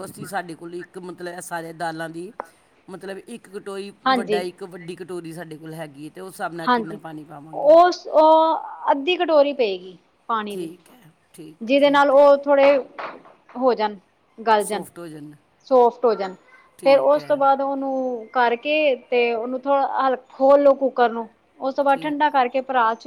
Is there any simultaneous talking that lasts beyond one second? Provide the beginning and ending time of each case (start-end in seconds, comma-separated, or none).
none